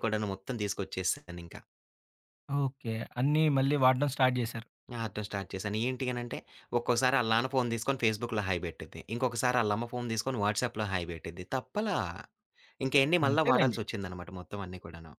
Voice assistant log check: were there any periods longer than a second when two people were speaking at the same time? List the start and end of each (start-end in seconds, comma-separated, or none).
none